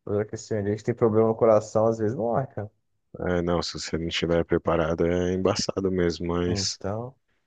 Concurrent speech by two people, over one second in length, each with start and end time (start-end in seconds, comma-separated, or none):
none